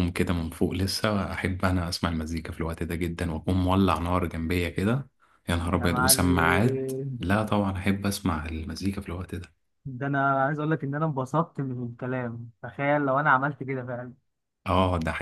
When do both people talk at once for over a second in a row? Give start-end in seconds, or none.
5.8-7.2